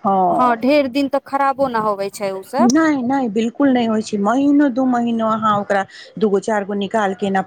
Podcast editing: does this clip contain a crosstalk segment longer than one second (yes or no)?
no